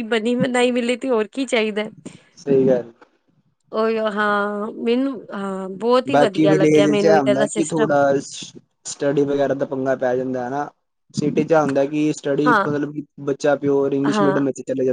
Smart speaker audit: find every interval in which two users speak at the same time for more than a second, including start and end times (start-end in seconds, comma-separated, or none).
6.1-7.9